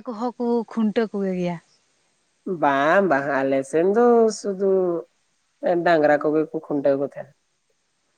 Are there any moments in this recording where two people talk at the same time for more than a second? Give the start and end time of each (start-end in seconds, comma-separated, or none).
none